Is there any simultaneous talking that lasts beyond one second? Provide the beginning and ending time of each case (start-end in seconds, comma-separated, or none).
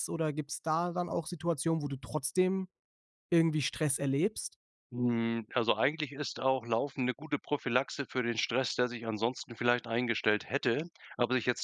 none